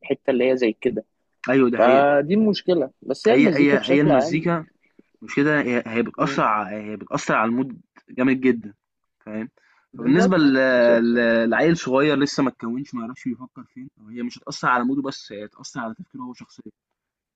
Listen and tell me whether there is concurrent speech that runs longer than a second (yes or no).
yes